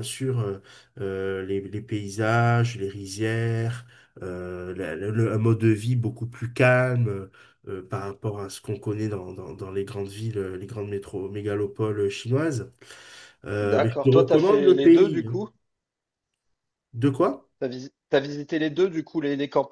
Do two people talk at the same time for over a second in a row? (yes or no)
yes